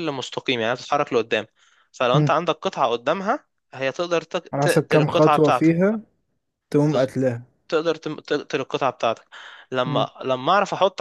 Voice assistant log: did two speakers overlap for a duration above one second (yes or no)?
yes